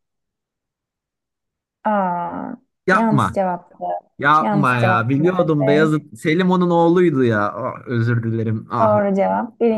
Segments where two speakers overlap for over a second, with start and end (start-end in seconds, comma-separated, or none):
4.4-5.9